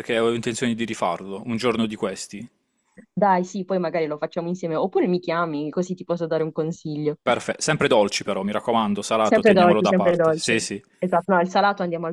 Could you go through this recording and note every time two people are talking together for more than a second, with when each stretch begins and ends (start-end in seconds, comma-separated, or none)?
9.2-10.5